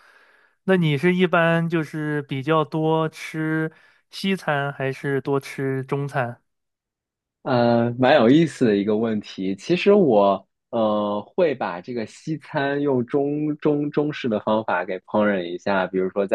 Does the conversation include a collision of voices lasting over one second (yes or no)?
no